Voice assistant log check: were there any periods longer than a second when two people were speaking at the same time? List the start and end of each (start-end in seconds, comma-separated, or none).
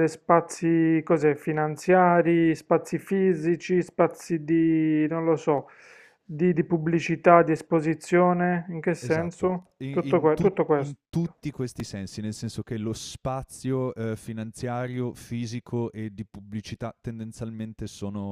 9.0-11.0